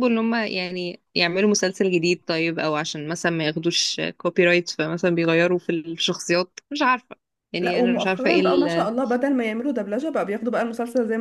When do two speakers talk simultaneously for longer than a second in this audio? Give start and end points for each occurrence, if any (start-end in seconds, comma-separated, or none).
7.6-8.9